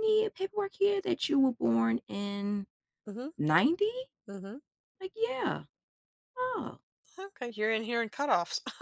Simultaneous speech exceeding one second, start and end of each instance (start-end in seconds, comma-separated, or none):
none